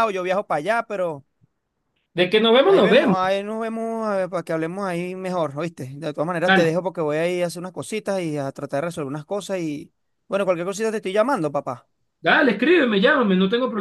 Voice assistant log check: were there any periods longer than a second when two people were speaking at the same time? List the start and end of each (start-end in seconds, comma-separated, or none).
none